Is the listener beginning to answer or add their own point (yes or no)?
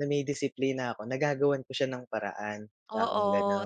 yes